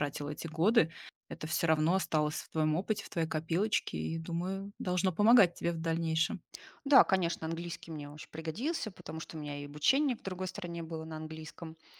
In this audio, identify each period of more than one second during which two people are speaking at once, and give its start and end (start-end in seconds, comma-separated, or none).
none